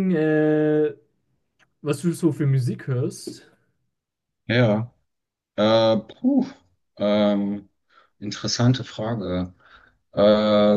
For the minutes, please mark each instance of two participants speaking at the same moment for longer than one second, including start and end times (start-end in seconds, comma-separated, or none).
none